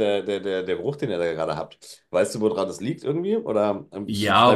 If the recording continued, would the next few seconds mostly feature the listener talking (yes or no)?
yes